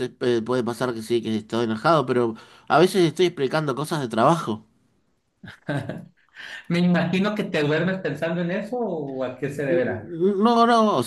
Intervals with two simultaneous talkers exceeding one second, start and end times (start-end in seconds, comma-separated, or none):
none